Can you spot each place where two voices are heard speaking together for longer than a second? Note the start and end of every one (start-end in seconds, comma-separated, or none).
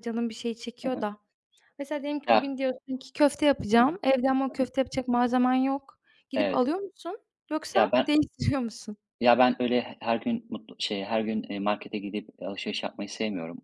none